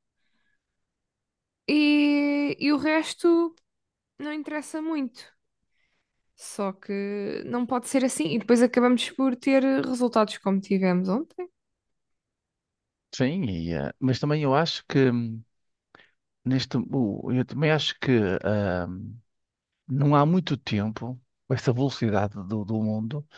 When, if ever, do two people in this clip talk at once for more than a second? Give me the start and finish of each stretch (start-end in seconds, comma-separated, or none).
none